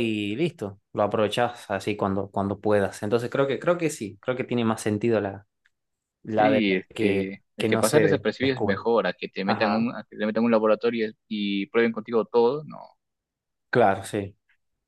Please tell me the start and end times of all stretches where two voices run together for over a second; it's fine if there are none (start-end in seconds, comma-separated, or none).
6.3-8.8